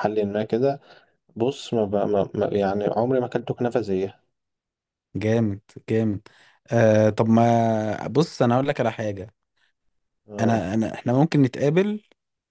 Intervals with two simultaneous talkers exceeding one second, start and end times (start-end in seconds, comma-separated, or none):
none